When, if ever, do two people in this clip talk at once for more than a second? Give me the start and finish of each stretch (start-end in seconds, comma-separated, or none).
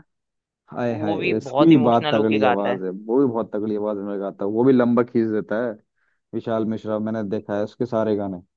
0.9-2.8